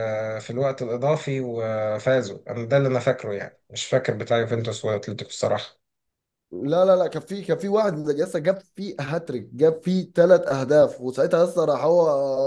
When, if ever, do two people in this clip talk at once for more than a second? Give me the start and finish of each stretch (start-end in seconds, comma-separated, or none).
none